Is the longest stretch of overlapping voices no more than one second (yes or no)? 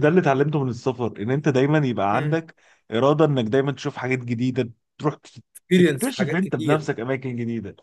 no